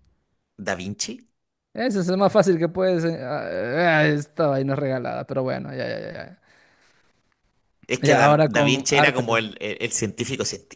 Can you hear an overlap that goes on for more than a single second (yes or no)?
yes